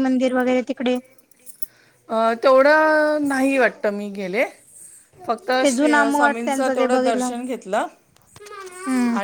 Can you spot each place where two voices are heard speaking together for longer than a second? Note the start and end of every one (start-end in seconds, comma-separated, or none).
5.6-7.3